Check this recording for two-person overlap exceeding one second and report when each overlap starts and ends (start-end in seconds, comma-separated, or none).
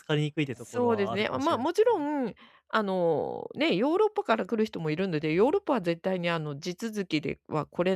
0.5-2.0